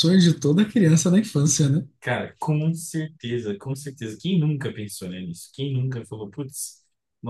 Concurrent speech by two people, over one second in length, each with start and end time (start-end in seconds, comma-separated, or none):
none